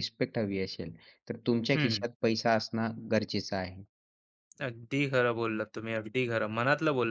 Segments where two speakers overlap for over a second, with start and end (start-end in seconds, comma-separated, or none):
none